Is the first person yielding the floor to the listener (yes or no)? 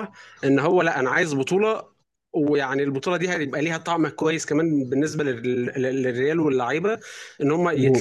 no